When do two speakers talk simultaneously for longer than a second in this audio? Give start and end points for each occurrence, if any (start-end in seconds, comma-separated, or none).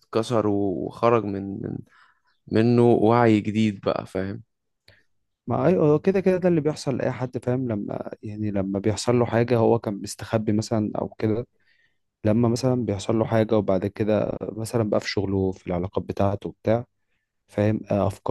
none